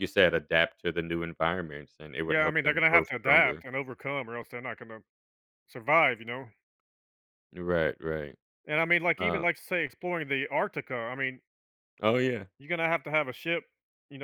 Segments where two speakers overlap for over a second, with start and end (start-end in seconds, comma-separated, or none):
2.3-3.6